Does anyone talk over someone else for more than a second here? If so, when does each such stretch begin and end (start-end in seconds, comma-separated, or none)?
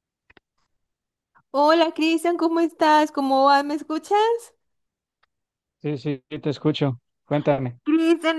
none